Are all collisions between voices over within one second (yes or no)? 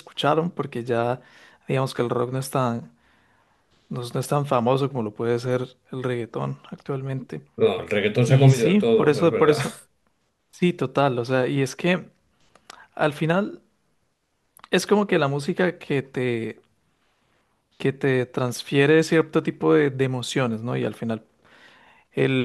no